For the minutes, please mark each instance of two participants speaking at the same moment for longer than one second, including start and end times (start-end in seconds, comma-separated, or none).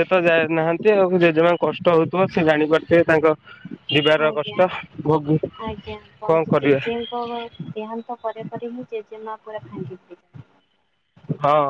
none